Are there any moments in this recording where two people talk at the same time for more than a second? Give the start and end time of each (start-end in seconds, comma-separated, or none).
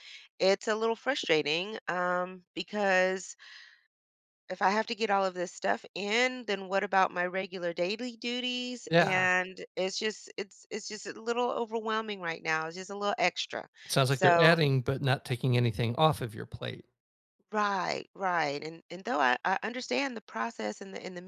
none